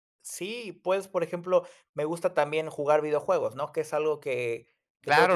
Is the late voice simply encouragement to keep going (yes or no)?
no